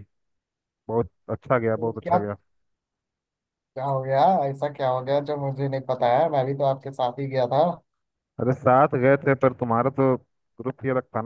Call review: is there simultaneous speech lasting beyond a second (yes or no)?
no